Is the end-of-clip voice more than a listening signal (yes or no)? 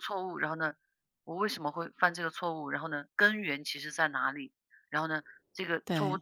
no